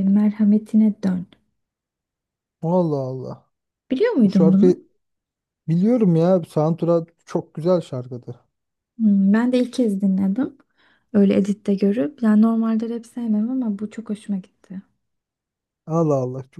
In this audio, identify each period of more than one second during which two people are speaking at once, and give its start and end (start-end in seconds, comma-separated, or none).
none